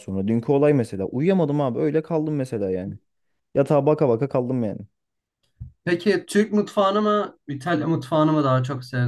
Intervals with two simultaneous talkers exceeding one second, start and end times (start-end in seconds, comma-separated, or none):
none